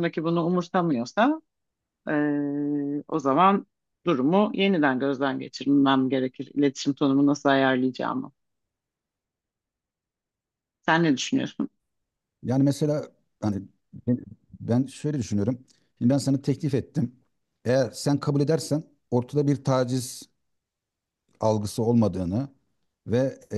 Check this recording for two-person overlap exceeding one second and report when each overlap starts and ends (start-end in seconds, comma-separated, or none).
none